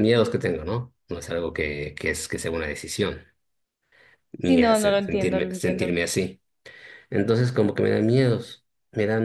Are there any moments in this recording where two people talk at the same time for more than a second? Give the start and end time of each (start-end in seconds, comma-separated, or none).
4.4-6.0